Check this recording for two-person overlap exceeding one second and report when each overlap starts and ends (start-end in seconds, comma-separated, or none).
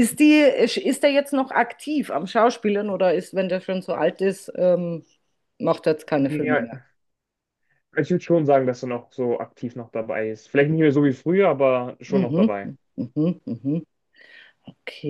none